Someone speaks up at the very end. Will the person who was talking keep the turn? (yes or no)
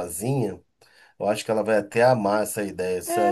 no